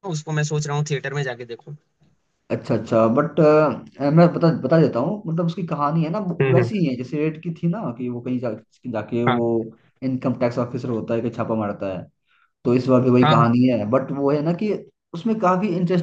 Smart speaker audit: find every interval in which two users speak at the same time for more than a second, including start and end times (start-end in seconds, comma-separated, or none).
none